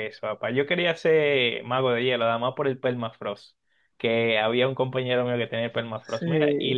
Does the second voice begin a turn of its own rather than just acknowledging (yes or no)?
no